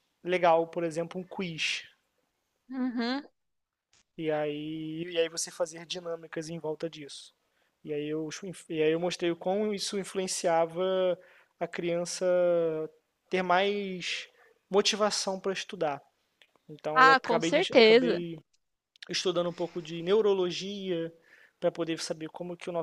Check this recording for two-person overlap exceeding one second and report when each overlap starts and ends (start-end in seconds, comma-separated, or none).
16.9-18.2